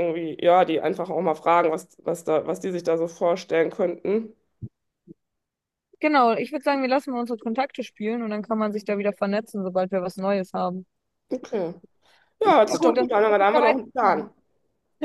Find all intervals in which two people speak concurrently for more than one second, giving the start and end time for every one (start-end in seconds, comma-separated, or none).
12.7-14.3